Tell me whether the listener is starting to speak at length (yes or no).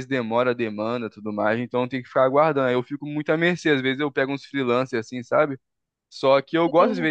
no